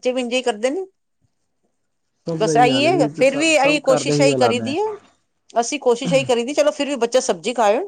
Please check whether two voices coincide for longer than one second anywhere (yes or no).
yes